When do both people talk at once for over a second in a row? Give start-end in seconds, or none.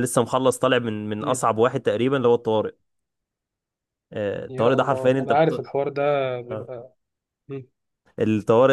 4.5-5.7